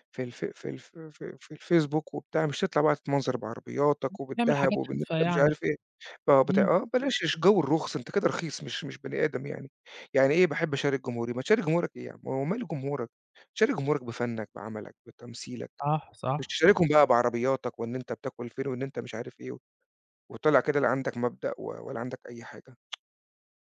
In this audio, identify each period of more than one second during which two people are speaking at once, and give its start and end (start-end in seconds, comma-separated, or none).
4.4-5.6